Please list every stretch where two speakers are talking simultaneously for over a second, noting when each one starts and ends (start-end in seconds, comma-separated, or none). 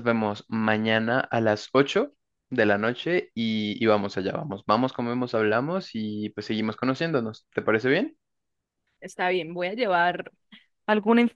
none